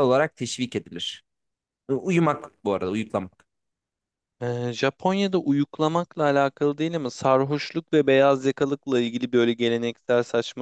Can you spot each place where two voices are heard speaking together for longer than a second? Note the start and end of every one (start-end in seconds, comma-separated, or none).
none